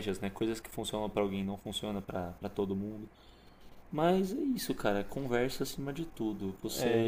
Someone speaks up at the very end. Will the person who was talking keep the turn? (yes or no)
no